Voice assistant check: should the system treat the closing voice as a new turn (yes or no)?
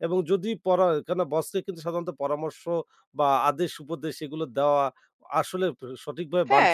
yes